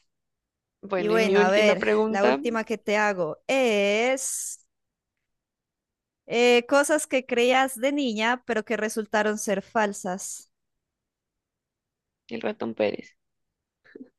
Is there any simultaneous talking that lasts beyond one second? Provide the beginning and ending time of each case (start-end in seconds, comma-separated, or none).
0.9-2.4